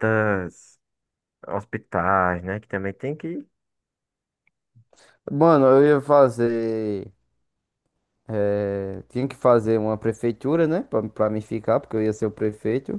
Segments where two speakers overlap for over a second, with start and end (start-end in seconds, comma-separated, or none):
none